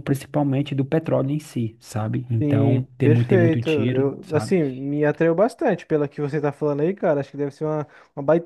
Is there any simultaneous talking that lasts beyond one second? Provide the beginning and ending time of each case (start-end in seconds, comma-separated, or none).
2.4-4.5